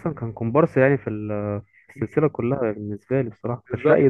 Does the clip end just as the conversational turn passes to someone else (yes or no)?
yes